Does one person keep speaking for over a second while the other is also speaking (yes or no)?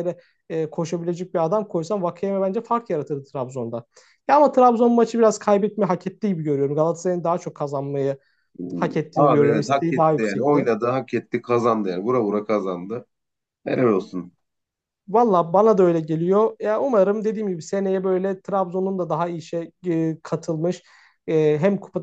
yes